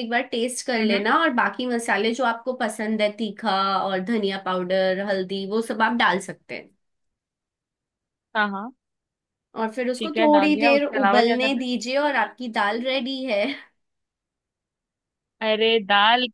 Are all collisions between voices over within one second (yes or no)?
no